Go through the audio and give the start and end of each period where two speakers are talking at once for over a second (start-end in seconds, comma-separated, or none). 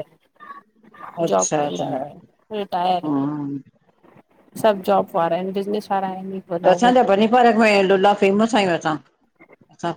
none